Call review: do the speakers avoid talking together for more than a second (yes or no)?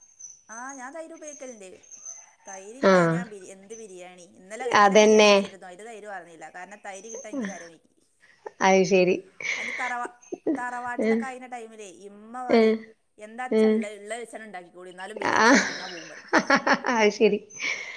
yes